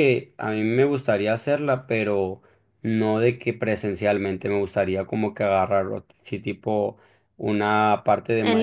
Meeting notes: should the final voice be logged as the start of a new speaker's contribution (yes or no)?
no